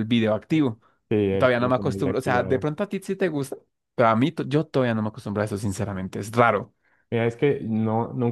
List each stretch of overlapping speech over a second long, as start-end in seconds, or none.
1.4-2.6